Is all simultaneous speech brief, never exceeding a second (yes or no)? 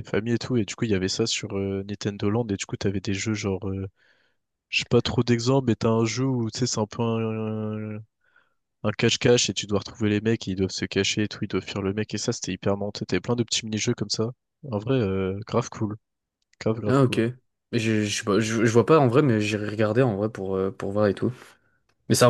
yes